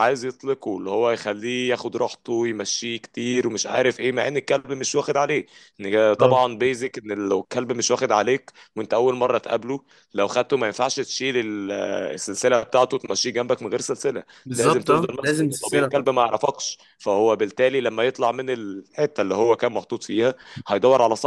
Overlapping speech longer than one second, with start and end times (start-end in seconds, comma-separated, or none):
14.4-16.1